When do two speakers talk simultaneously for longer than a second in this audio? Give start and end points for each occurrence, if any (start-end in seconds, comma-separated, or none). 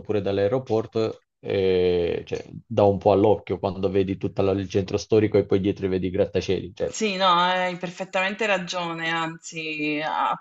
none